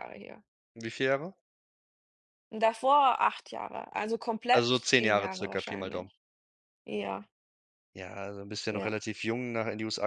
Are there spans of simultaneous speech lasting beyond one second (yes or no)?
yes